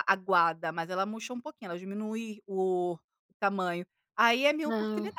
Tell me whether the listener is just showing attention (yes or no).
yes